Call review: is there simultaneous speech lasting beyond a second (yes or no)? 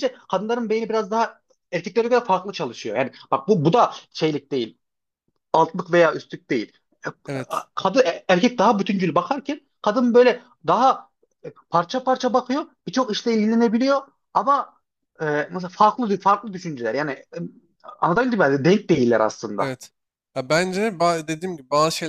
no